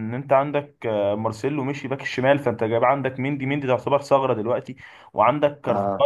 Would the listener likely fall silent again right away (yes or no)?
yes